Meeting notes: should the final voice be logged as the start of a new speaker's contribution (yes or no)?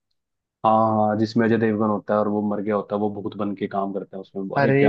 yes